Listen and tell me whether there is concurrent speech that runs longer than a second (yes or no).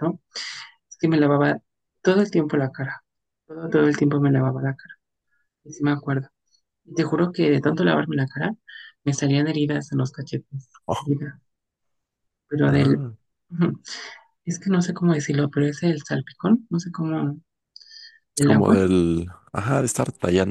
no